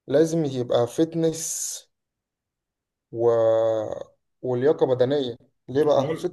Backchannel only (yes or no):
yes